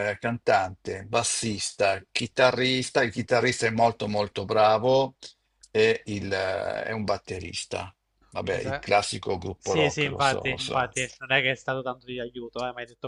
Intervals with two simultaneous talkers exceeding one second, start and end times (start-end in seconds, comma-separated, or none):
9.6-10.9